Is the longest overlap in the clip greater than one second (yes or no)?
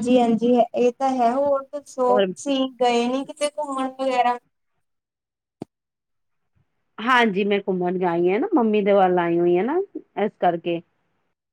no